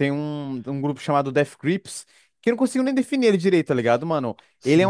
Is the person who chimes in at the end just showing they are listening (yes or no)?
yes